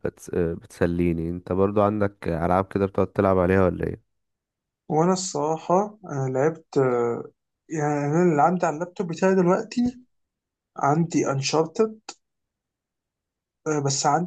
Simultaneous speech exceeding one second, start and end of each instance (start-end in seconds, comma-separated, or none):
none